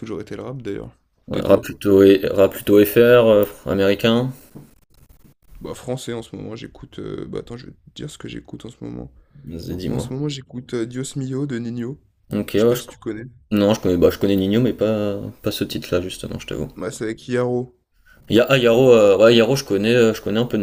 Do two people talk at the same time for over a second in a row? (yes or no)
no